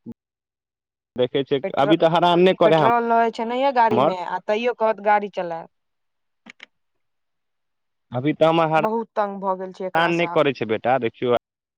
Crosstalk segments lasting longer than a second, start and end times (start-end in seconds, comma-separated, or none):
8.8-10.4